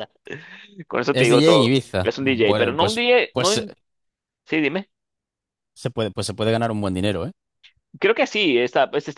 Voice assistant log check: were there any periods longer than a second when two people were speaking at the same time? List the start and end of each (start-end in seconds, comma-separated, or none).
1.1-3.6